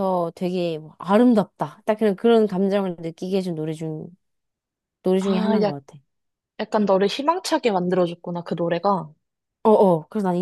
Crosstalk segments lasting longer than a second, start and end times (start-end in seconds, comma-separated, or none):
none